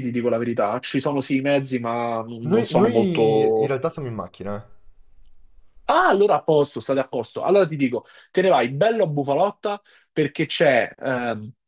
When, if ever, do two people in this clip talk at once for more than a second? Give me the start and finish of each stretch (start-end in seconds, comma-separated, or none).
2.5-3.8